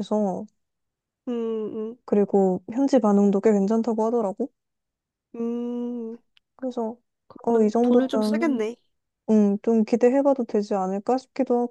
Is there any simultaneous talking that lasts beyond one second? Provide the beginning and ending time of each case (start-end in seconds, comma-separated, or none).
7.4-8.6